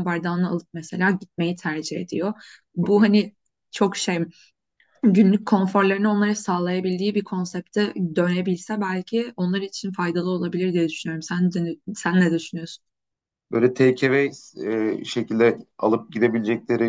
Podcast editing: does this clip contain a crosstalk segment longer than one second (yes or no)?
no